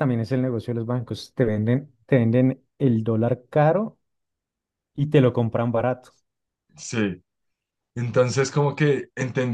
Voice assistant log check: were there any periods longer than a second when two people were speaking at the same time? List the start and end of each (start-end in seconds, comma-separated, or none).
none